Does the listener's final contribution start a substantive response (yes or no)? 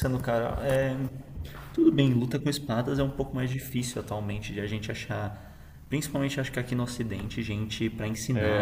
yes